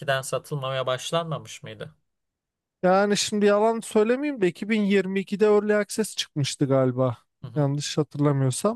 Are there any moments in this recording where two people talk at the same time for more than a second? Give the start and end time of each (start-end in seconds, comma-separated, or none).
none